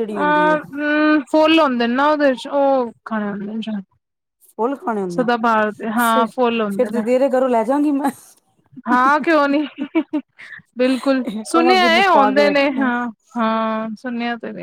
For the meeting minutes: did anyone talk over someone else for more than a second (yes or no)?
yes